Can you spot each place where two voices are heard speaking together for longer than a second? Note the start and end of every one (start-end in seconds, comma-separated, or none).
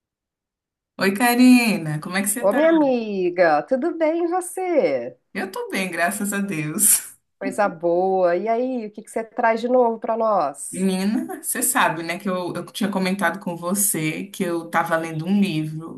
none